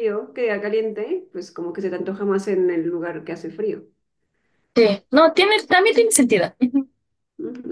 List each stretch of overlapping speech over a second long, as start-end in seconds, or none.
none